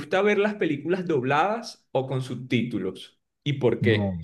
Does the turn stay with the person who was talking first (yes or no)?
no